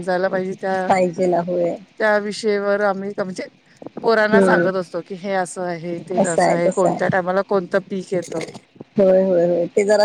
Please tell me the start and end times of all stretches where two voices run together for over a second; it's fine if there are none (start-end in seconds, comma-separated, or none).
none